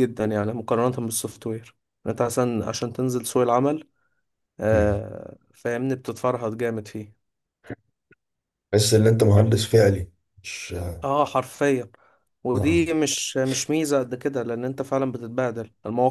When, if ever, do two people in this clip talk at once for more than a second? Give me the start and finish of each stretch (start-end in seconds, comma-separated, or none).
none